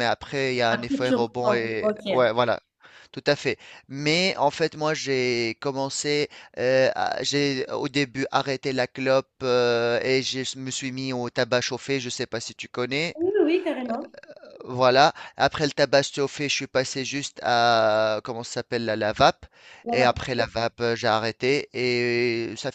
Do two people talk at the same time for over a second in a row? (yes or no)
yes